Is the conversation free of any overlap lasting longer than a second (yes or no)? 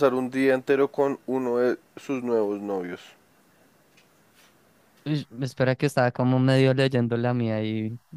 yes